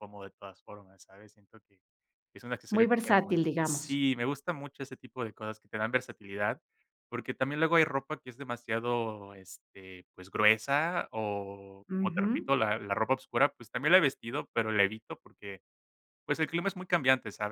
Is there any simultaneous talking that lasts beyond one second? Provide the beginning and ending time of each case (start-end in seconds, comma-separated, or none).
2.7-4.0